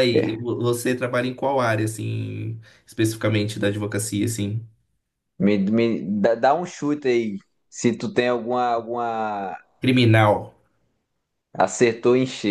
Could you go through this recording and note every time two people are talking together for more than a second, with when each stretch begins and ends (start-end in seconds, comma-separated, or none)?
none